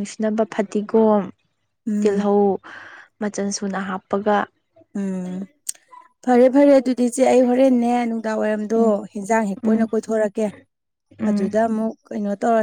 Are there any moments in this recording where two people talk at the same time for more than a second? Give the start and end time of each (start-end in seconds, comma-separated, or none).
none